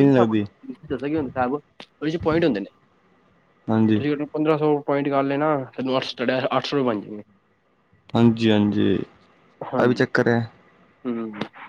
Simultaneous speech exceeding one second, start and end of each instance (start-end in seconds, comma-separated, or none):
none